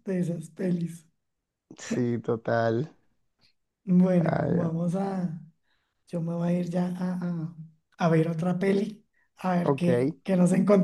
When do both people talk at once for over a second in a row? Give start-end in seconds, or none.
none